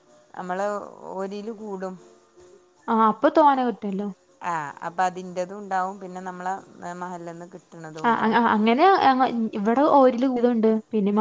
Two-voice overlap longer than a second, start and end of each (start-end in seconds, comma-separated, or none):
none